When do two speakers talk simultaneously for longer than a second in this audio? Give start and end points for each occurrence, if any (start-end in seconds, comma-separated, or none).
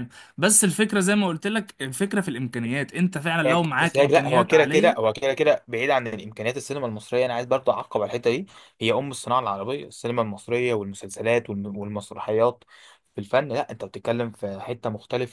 3.5-5.0